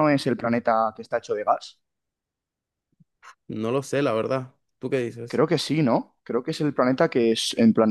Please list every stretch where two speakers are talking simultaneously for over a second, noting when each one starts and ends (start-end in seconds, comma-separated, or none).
none